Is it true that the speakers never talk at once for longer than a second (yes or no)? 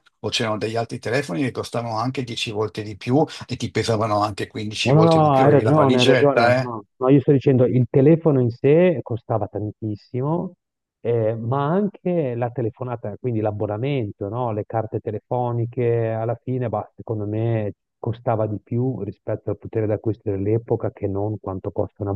no